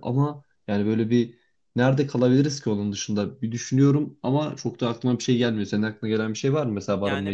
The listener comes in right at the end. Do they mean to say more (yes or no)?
yes